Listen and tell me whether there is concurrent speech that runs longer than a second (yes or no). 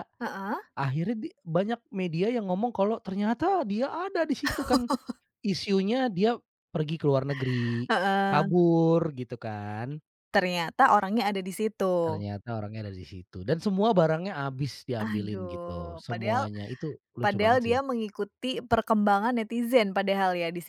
yes